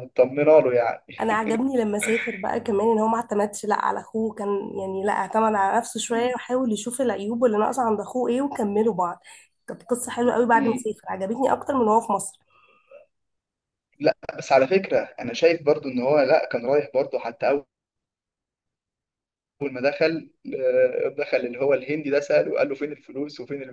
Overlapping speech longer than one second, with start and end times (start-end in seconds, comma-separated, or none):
none